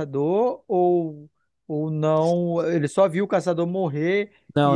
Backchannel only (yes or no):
no